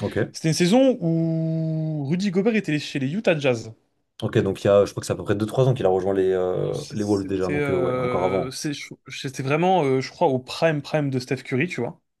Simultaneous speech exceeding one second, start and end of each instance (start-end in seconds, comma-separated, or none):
6.6-8.6